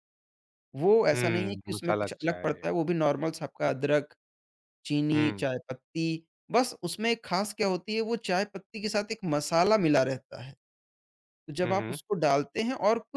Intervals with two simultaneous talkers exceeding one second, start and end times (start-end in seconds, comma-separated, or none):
1.1-2.7